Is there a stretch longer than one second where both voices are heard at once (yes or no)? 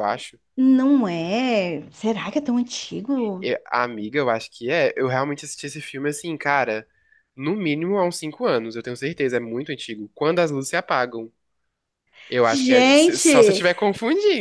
yes